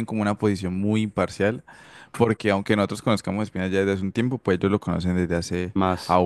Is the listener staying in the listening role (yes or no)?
yes